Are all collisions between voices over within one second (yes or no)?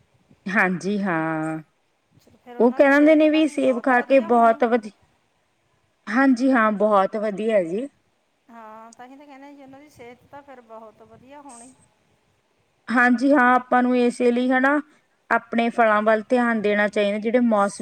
no